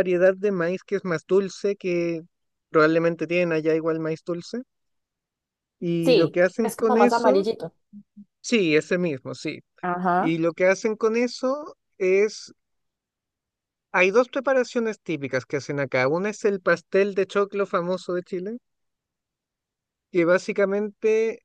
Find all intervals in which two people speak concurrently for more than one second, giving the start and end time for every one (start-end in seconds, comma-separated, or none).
6.0-7.5